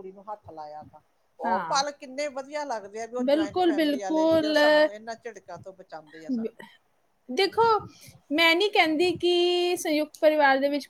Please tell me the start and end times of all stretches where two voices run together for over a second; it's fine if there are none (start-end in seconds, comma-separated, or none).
3.3-4.6